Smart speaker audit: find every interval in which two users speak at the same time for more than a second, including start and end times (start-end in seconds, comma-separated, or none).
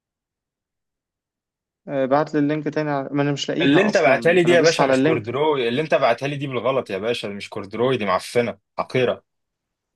3.6-5.2